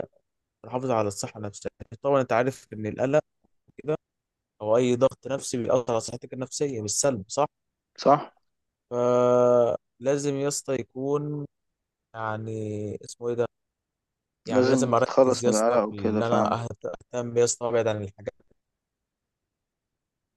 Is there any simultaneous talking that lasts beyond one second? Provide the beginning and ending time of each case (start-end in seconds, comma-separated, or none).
14.5-16.6